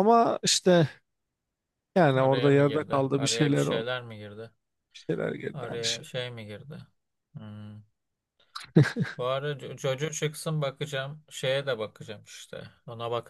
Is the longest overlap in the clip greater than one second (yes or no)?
yes